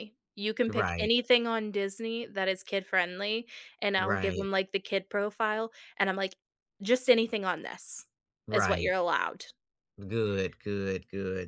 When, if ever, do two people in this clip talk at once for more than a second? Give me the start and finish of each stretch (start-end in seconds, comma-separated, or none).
none